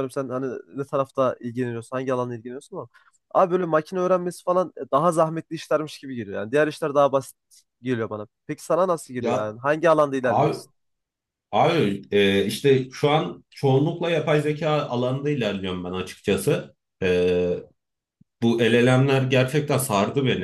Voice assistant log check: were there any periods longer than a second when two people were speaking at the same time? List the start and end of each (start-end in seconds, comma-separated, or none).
none